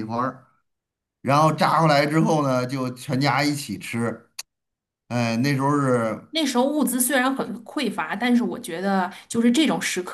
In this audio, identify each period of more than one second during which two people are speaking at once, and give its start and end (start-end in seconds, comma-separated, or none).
none